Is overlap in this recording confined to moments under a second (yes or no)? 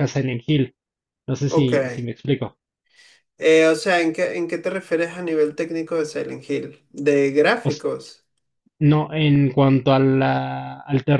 yes